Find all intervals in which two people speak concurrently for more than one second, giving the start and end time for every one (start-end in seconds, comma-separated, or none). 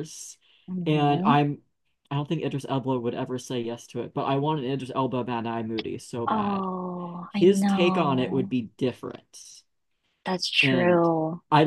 7.3-8.6